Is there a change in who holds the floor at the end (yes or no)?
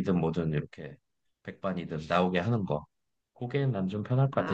yes